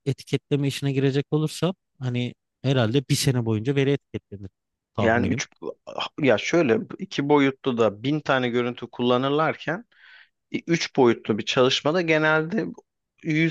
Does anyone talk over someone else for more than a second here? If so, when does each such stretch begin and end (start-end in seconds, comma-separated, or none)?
none